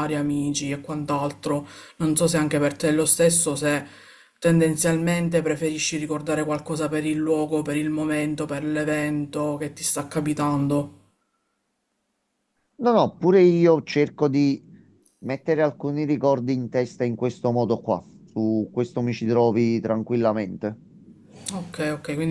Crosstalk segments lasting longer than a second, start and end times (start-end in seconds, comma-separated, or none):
none